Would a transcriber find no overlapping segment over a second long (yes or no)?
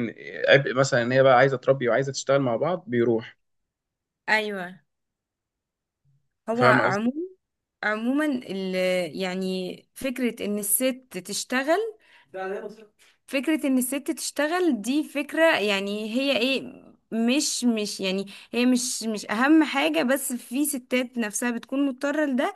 yes